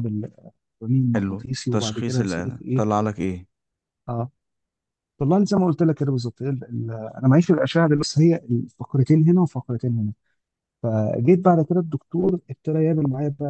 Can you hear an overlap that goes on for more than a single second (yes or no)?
yes